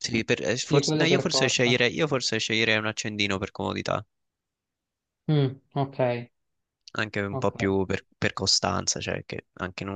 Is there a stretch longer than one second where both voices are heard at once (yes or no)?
yes